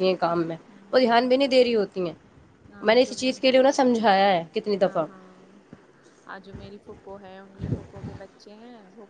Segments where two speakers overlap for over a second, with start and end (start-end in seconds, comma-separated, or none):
none